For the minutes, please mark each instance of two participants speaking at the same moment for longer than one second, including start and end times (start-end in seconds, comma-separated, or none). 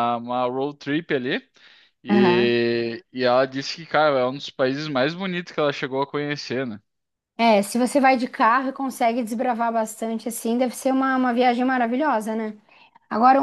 none